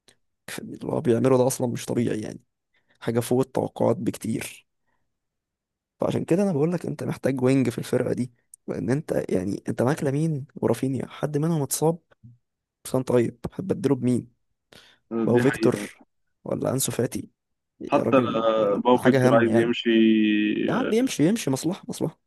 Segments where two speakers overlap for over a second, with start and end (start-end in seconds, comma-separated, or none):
17.9-19.7